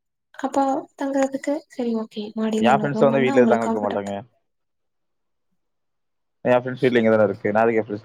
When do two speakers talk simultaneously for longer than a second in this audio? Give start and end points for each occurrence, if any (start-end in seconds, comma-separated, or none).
2.7-4.1